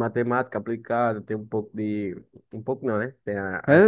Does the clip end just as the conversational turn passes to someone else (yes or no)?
yes